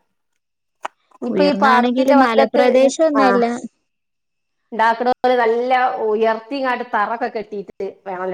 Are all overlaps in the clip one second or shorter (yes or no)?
no